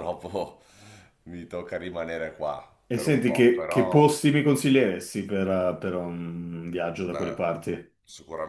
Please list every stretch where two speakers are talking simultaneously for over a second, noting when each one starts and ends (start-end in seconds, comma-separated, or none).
2.9-4.2